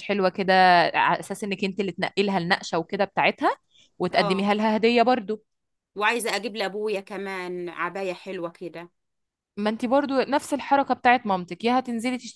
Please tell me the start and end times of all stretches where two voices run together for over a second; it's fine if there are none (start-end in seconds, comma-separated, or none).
none